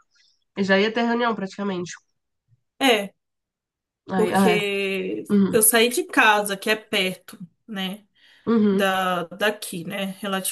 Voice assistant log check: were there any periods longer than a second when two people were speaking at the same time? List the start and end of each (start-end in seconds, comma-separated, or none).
none